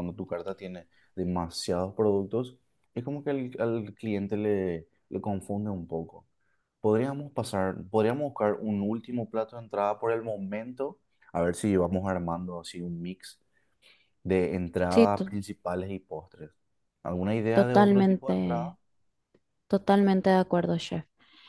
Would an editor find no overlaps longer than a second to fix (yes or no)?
no